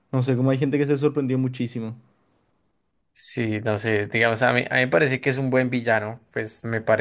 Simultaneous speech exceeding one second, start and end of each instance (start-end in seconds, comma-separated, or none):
none